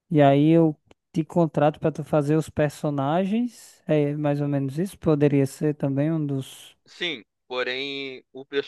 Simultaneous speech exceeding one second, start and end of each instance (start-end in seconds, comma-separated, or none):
none